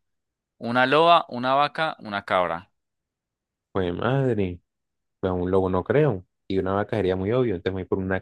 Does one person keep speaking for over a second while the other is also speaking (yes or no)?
no